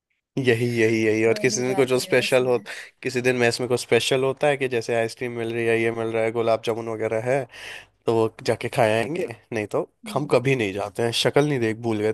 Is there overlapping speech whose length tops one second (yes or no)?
yes